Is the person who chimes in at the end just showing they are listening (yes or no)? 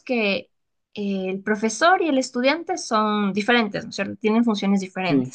yes